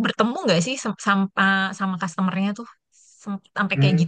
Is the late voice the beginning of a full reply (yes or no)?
yes